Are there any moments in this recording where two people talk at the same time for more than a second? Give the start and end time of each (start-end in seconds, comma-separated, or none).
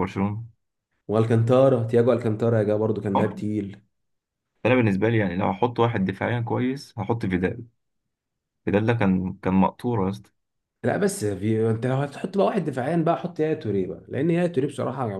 none